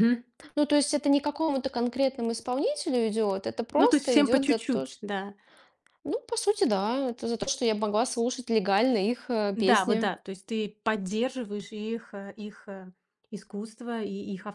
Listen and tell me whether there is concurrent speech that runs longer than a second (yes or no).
yes